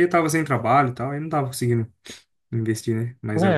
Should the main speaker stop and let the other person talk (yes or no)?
yes